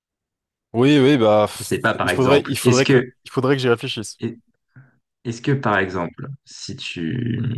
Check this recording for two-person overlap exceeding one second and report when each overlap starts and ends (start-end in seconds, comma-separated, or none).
1.6-3.1